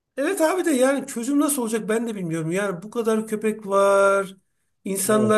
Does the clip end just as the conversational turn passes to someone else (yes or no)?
no